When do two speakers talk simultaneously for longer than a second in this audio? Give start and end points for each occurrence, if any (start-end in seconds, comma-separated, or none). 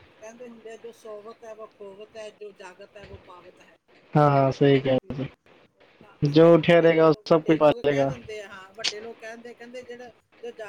6.7-8.1